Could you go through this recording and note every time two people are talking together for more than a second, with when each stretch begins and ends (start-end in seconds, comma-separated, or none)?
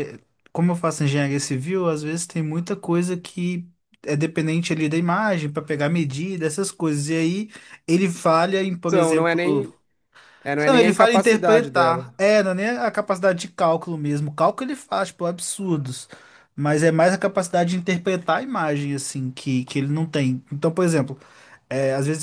10.7-12.1